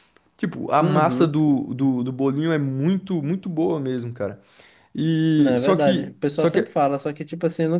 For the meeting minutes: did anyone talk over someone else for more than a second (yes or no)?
yes